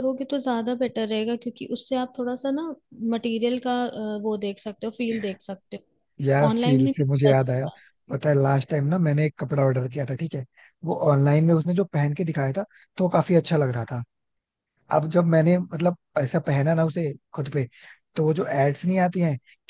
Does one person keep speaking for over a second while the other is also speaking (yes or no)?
yes